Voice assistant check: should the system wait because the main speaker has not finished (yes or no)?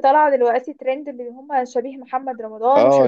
no